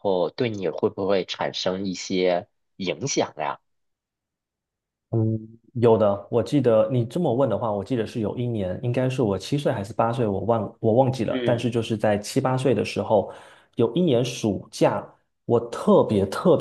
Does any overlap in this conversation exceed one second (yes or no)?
no